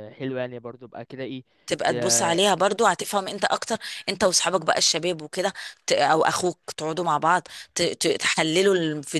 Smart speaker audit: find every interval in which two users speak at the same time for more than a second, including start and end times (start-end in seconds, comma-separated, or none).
none